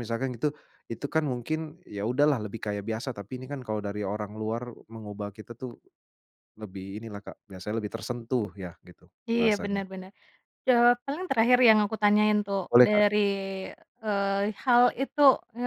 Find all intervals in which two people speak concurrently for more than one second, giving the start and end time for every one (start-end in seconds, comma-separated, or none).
none